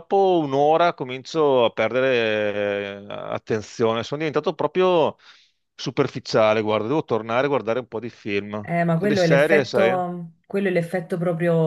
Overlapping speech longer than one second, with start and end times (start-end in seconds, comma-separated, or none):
8.6-10.0